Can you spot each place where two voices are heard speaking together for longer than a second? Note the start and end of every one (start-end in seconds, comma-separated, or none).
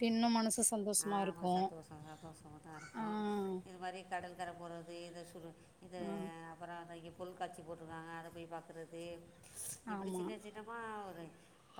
none